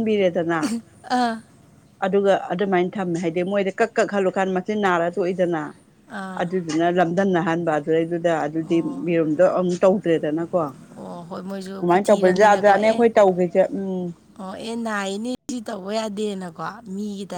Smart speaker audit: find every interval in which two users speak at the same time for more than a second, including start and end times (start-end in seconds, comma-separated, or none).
11.0-13.0